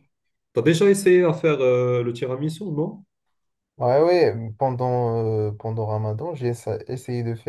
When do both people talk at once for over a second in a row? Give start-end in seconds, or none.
none